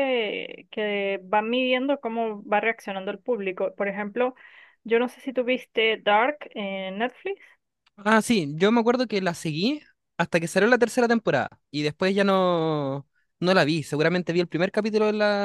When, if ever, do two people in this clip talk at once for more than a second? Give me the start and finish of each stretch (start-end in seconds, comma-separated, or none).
none